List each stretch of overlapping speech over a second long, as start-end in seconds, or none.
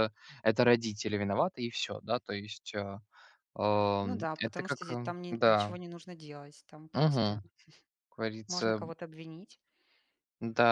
4.0-5.7